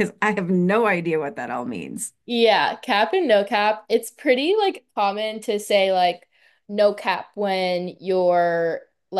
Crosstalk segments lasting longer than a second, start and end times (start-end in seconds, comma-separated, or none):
none